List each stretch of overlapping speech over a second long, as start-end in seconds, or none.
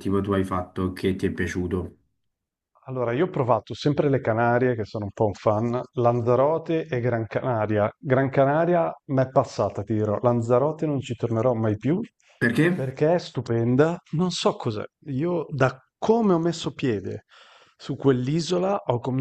none